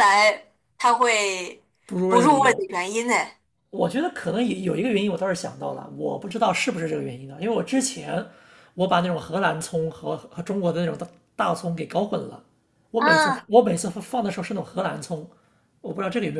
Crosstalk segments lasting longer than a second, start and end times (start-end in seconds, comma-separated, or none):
none